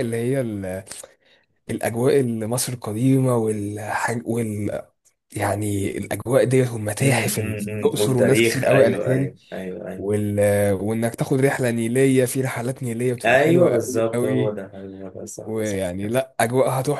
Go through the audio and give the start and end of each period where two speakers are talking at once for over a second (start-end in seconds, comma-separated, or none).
7.0-9.3, 13.2-14.6